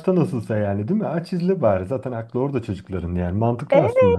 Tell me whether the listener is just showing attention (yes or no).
no